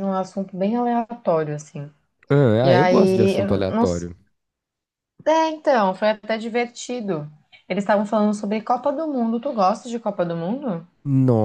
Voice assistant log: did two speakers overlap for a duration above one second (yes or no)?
yes